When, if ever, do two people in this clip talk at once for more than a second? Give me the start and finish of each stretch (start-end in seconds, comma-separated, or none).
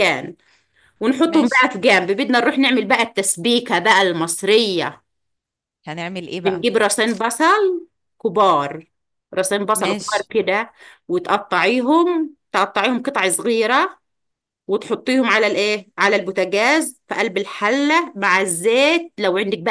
none